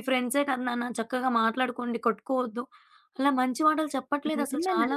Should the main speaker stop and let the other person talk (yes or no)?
yes